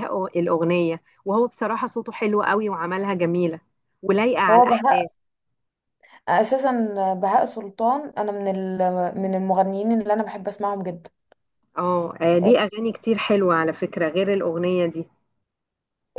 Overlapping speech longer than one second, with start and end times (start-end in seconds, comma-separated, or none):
none